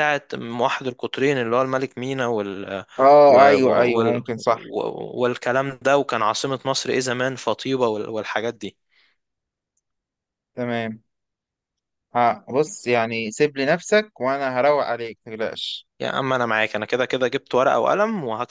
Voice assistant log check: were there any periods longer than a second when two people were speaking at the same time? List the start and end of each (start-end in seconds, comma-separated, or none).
3.3-4.7